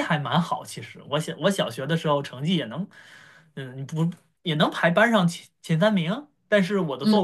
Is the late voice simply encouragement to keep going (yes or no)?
yes